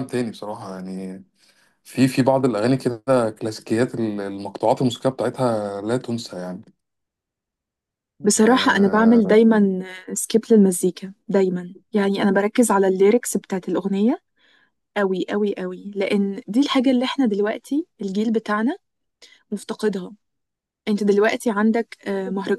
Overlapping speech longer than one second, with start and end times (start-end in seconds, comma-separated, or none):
none